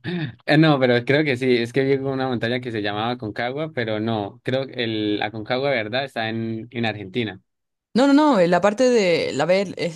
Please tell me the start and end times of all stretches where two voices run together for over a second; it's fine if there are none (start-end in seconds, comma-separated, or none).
none